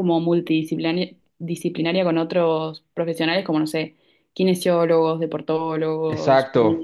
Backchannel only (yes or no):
no